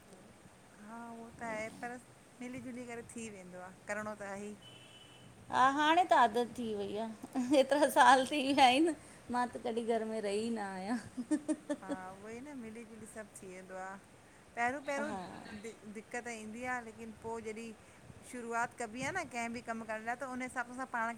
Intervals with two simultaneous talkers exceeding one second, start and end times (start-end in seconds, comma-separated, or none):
none